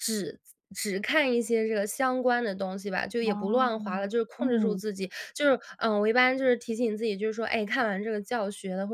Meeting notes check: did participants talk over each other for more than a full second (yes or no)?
yes